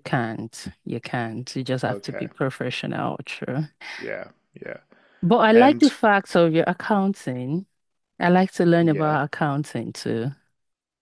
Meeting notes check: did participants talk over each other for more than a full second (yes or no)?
no